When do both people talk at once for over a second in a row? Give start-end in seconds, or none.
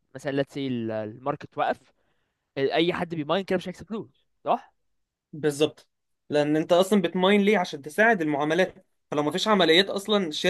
none